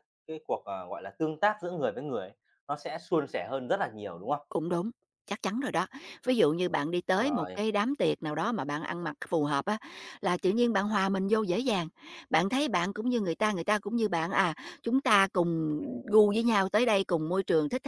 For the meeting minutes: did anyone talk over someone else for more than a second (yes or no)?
no